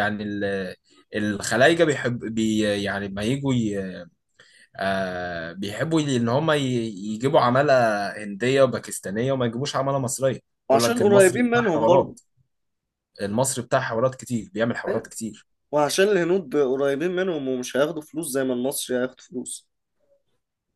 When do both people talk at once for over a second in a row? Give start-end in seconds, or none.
10.7-12.2